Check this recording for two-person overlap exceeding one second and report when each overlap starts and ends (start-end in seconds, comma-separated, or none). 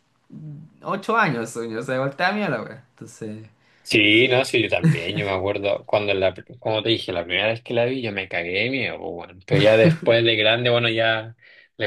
none